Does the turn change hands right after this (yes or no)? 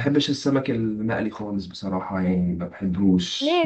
yes